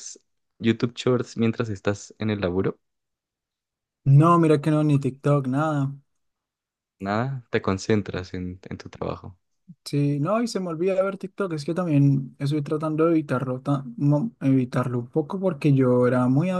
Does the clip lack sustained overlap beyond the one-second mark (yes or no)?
yes